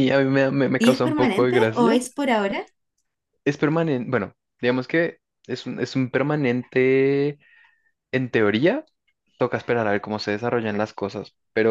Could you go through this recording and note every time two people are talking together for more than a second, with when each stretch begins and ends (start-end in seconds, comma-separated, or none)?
0.8-2.0